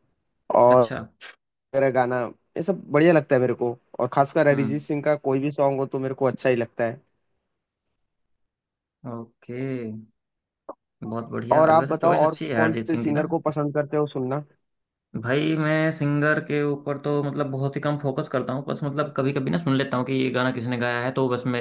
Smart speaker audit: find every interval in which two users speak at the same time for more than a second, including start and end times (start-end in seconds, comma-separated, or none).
11.5-13.2